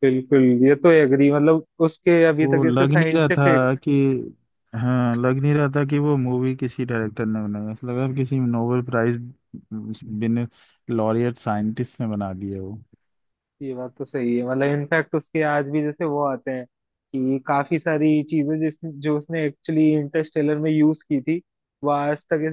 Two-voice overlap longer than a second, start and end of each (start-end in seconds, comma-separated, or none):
2.4-3.6